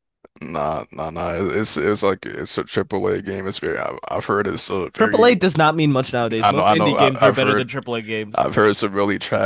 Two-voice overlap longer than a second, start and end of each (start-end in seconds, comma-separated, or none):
6.4-7.7